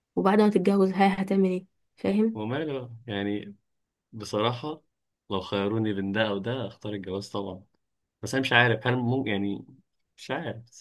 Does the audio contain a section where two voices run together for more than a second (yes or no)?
no